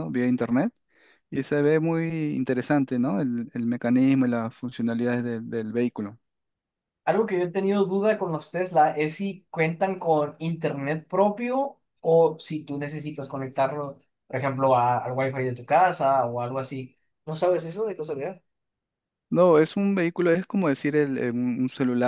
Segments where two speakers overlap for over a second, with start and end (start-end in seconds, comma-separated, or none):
none